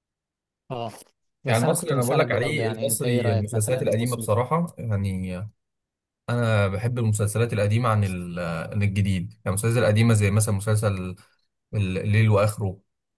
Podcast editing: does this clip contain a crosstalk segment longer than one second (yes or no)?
yes